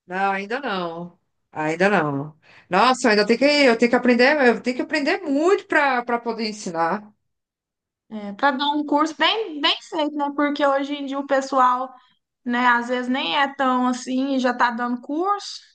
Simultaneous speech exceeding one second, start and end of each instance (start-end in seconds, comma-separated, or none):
none